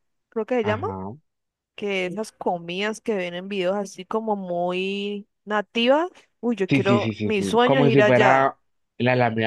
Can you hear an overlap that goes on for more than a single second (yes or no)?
yes